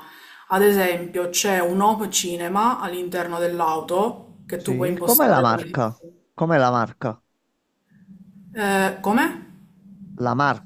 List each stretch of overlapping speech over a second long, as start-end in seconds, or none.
4.6-5.8